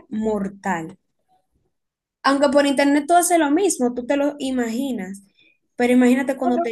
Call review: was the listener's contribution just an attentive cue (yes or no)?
no